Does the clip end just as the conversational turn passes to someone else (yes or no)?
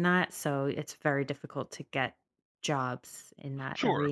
yes